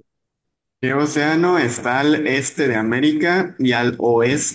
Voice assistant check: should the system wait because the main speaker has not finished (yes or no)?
yes